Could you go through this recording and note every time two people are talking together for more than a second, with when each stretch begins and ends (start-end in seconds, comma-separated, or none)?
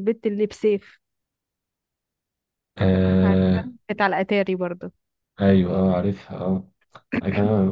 none